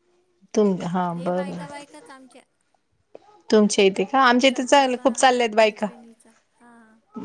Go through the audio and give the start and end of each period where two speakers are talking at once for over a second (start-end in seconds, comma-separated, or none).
4.3-5.9